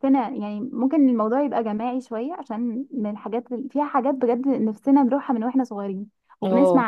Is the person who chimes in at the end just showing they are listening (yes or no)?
yes